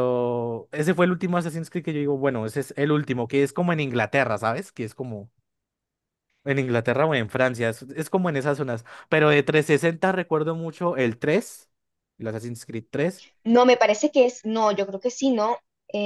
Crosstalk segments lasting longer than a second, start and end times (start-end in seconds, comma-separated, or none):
none